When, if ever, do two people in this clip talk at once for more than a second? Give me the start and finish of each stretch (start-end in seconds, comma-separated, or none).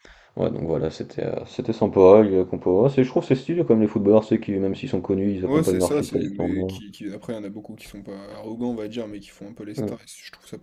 5.5-6.8